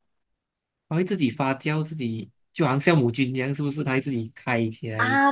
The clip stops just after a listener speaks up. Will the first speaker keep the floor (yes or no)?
no